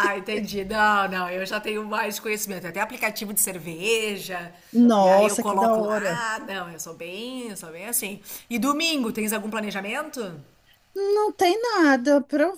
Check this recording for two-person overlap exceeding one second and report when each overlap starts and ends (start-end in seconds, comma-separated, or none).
5.0-6.3